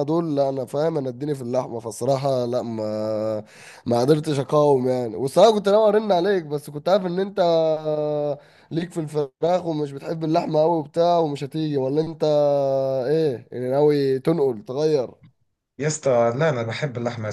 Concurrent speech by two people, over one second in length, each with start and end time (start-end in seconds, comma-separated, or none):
none